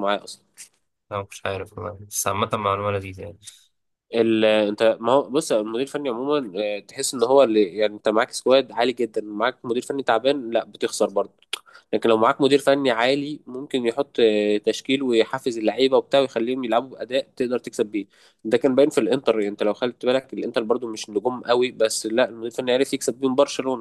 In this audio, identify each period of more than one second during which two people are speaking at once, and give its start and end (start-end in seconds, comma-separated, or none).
none